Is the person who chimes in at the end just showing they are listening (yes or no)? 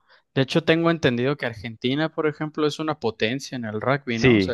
no